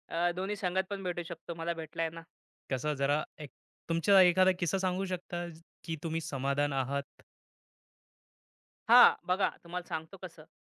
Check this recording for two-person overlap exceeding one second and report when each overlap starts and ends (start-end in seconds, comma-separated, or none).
none